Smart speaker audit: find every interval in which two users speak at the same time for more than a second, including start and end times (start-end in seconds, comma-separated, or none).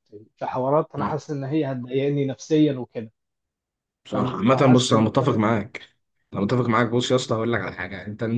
4.1-5.4